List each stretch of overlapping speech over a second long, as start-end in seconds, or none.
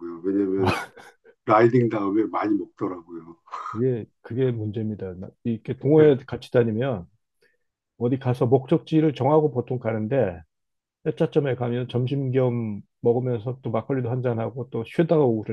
none